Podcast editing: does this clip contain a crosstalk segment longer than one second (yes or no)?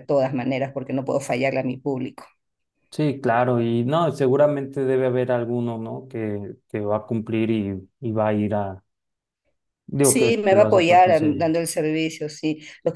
yes